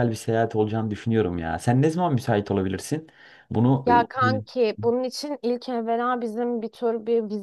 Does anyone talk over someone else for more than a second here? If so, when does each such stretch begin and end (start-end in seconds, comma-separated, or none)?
none